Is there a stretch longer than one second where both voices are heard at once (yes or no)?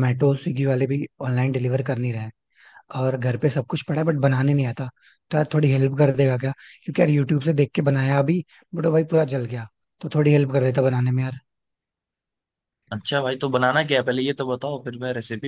no